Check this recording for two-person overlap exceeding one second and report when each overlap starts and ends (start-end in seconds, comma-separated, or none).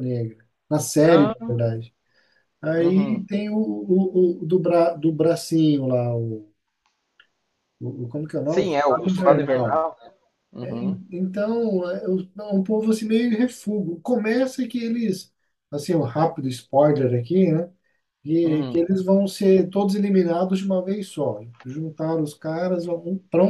8.4-9.8